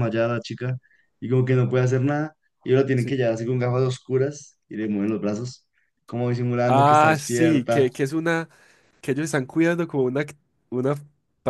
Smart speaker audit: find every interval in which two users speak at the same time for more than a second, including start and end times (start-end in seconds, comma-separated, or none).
6.6-7.9